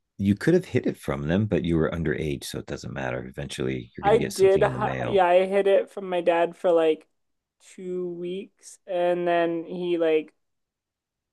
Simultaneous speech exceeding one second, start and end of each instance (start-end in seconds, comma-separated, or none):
4.0-5.3